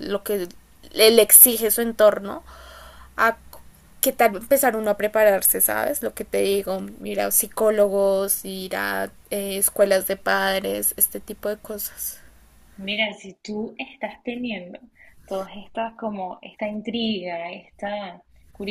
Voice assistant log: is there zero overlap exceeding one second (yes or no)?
yes